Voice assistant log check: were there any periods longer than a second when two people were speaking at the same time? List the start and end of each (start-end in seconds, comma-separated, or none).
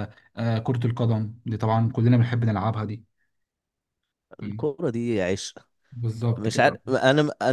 none